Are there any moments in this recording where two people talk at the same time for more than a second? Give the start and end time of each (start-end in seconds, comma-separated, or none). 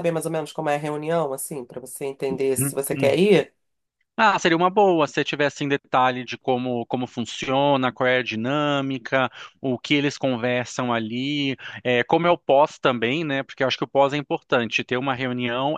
none